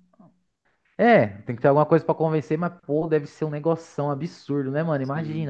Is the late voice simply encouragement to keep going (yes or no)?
yes